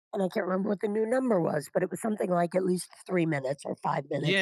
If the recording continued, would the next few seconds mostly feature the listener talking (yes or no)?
yes